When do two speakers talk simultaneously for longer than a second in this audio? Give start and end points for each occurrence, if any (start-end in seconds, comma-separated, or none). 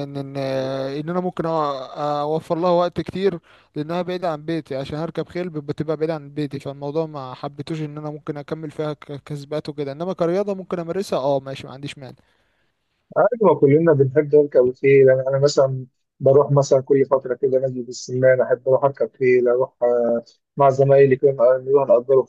none